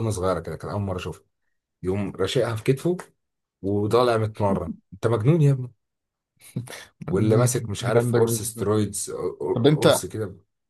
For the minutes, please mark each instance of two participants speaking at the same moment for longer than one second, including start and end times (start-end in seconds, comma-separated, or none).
7.1-8.7